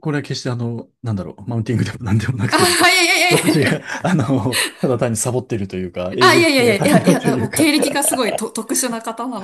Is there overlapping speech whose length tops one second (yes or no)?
yes